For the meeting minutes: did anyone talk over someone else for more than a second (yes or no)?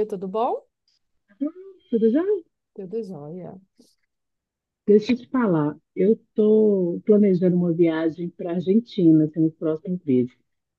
no